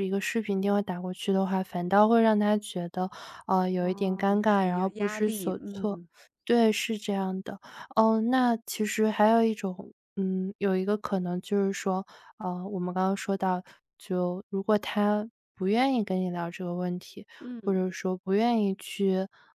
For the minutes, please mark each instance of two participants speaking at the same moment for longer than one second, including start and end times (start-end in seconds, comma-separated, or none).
3.8-6.0